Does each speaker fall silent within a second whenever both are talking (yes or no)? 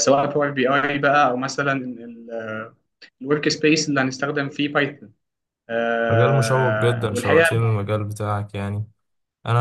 no